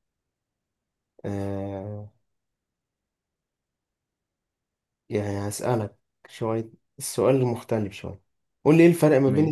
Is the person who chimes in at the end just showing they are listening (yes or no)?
yes